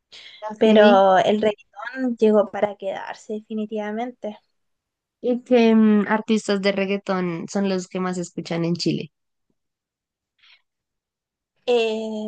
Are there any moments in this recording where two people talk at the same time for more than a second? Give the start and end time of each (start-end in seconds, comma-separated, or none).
none